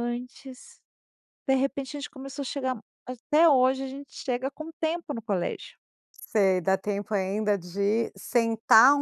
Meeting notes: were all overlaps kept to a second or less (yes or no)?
yes